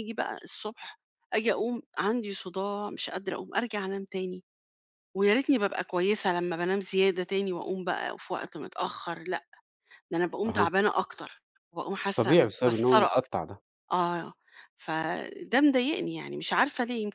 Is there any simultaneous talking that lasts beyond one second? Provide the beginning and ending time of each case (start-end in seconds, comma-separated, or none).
12.2-13.4